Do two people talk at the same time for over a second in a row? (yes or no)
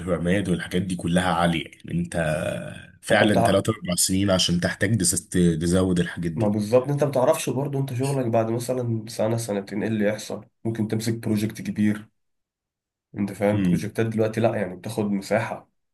no